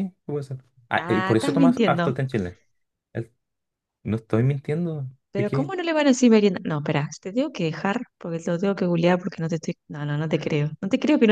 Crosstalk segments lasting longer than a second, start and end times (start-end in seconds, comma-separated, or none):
1.0-2.2